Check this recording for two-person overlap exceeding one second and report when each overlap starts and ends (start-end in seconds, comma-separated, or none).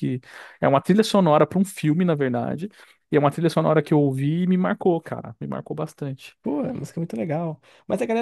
none